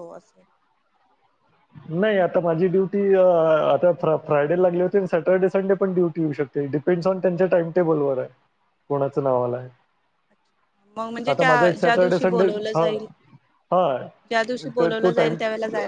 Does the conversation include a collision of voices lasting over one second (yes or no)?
yes